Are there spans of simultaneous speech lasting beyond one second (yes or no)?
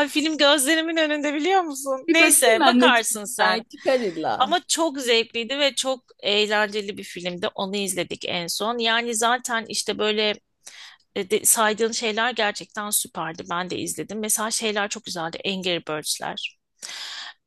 yes